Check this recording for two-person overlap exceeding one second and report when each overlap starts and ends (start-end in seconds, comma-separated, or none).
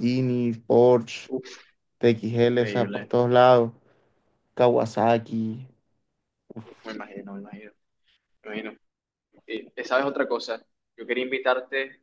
none